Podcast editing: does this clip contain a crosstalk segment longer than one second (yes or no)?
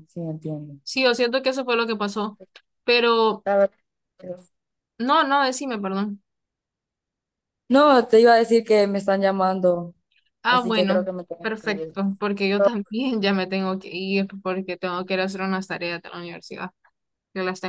yes